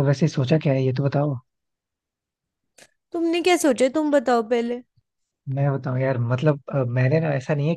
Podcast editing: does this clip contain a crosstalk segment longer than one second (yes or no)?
no